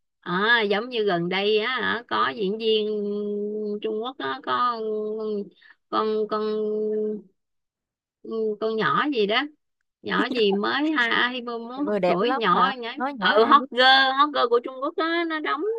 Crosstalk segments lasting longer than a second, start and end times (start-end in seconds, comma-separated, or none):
11.8-13.7